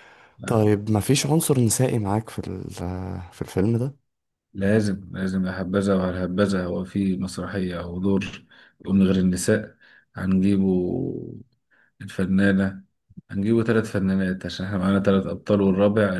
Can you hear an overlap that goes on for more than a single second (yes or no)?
no